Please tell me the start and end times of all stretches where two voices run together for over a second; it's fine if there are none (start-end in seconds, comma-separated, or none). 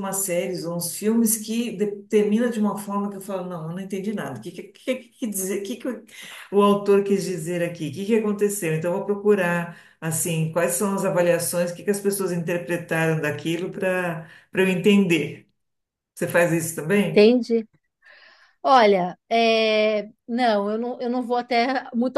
none